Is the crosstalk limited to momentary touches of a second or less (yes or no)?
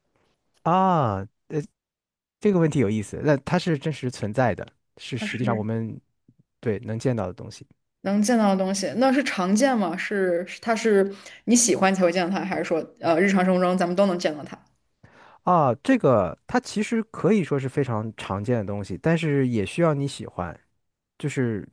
yes